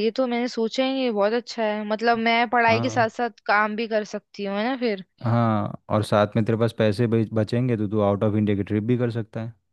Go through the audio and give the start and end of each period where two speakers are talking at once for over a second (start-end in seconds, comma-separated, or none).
none